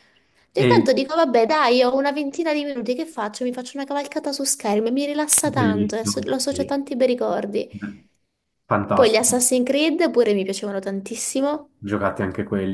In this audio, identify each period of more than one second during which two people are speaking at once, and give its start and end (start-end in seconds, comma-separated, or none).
5.4-6.8